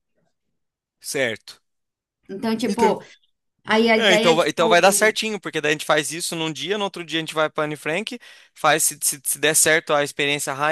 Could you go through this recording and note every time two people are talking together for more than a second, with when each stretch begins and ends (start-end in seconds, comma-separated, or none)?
4.0-5.2